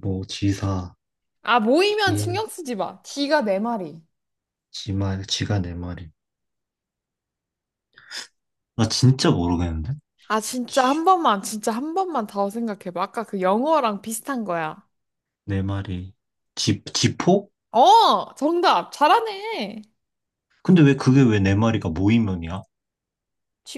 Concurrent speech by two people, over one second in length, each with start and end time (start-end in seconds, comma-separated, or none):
none